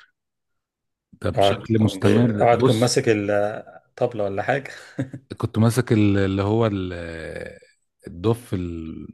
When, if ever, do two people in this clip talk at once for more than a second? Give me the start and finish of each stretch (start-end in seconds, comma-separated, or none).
1.8-3.0